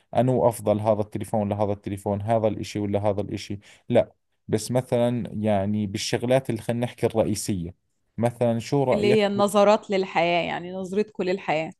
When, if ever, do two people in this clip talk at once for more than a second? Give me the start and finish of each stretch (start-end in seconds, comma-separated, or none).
none